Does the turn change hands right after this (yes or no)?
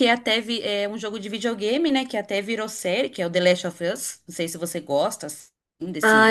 yes